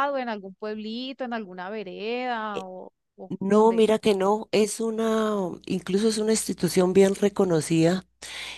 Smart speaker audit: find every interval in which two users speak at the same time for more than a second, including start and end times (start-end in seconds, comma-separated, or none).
none